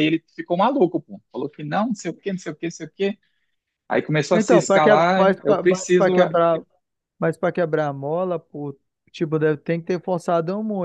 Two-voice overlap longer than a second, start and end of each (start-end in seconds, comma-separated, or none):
4.3-6.3